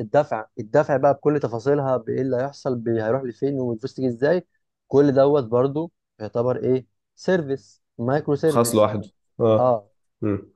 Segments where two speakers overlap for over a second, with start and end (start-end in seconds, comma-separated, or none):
none